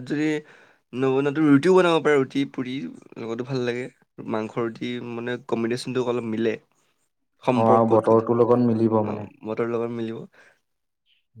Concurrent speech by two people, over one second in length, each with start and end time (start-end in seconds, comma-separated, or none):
7.6-9.1